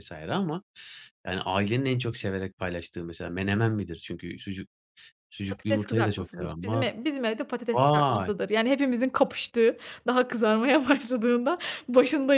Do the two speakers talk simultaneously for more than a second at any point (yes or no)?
yes